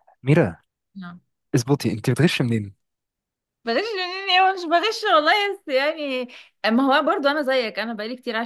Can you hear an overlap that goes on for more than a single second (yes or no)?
no